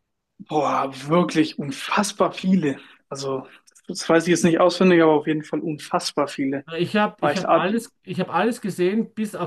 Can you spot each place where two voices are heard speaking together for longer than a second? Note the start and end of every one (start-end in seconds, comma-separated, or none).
none